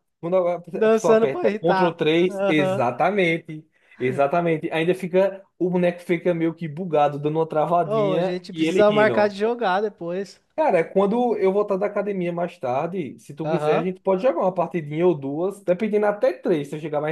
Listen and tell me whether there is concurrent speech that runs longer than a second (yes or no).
yes